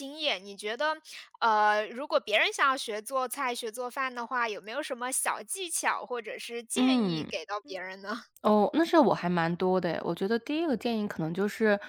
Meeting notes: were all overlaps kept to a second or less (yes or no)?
yes